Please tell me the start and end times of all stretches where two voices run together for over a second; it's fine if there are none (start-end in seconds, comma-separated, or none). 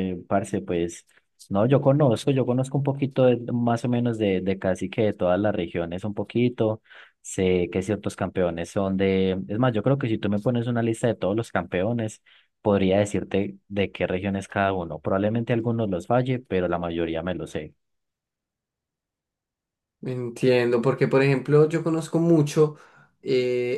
none